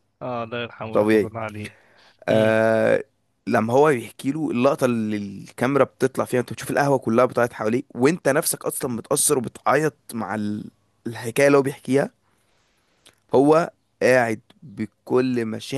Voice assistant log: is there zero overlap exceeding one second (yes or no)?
yes